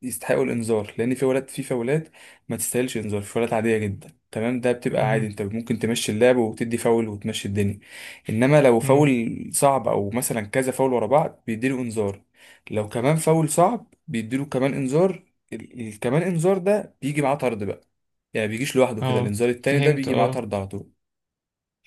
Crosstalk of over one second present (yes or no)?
yes